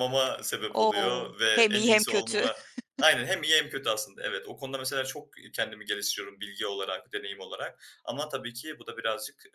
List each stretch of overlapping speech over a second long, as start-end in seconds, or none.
0.8-2.5